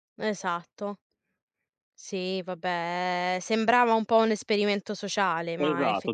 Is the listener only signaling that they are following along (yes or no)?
no